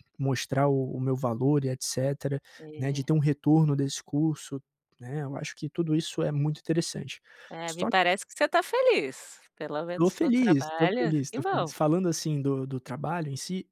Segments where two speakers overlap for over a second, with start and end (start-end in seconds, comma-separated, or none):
9.9-11.7